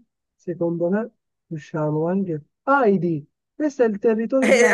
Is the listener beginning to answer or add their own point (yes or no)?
yes